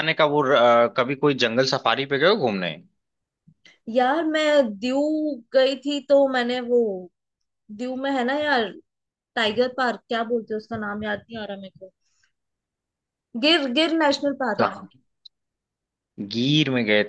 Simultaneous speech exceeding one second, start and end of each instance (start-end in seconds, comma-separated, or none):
none